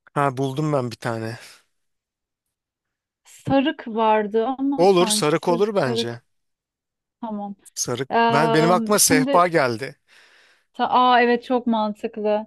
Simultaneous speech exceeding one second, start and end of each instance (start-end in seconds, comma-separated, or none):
4.8-6.2, 8.1-9.4